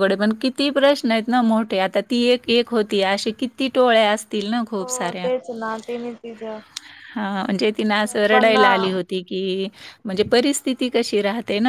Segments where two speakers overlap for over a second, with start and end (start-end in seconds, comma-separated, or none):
7.9-9.1